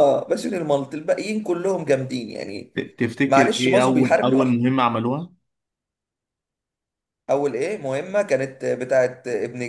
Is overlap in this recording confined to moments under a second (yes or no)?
no